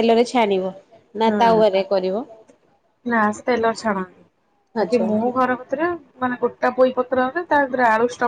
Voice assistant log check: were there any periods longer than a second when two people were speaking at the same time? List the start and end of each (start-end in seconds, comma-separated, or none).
none